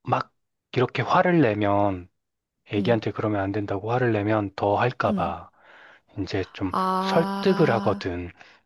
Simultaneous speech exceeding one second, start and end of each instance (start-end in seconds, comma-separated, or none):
6.7-8.1